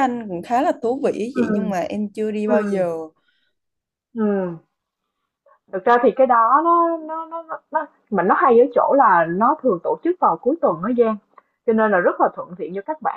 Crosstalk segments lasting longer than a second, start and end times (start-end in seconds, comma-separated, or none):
none